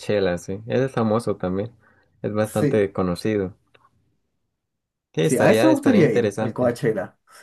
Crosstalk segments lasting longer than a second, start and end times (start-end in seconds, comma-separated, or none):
5.2-6.8